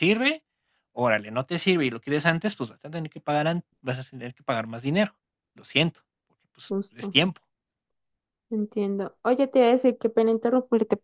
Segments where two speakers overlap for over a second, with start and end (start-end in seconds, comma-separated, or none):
none